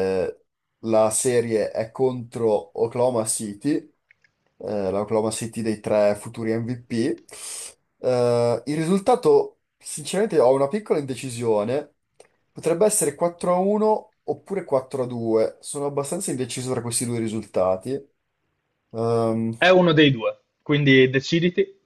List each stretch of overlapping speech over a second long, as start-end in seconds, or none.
none